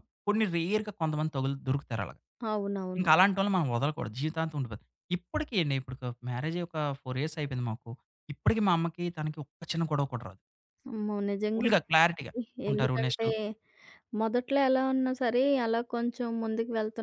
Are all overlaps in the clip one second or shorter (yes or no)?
yes